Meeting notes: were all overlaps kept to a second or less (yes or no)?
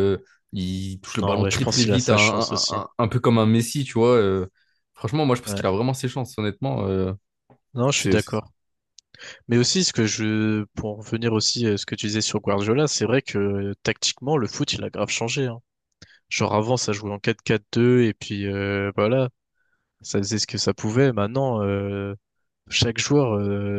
no